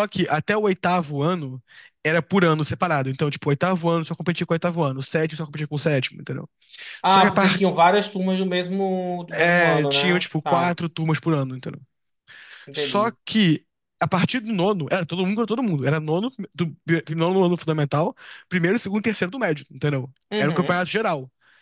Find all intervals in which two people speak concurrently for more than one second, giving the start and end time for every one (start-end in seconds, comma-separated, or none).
9.3-10.7